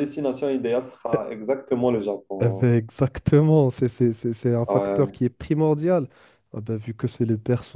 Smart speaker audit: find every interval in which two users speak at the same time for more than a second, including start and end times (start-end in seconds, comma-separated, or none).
none